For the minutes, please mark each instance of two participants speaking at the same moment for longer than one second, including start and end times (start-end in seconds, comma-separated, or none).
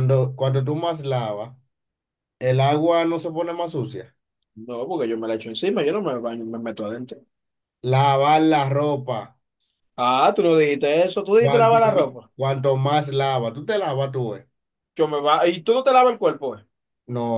none